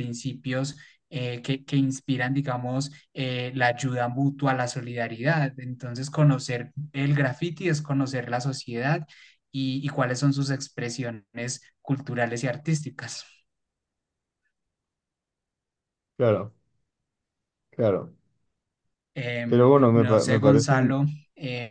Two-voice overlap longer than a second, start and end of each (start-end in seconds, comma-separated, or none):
19.5-20.7